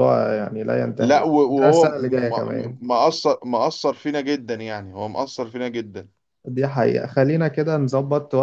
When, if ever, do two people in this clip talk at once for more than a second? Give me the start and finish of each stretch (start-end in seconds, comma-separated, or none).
1.0-2.8